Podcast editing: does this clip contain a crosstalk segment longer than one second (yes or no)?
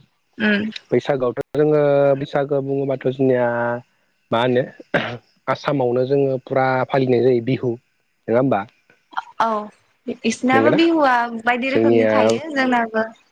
no